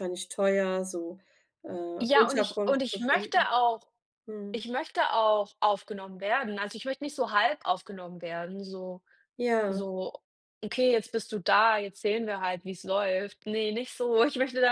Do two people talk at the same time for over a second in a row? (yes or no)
yes